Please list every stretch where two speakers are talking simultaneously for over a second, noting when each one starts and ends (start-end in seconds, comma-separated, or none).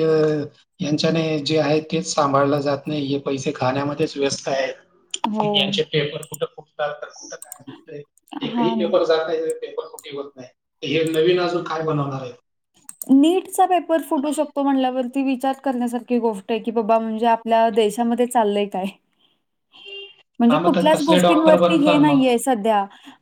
20.5-22.2